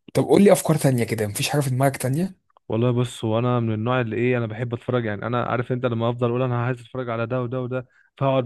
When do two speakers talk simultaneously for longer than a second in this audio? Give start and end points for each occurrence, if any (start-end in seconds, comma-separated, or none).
none